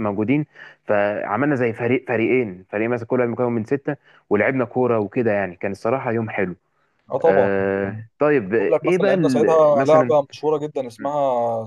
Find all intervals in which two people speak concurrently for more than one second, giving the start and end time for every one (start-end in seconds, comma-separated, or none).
8.6-10.0